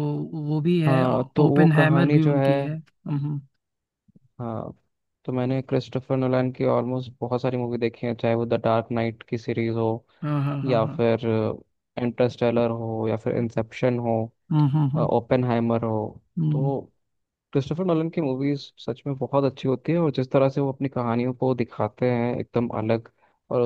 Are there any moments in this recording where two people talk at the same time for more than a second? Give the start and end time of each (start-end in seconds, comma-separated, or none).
0.9-2.5